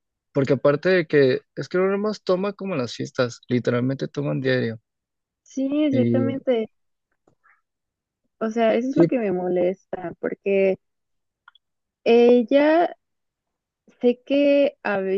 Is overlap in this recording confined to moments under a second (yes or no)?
yes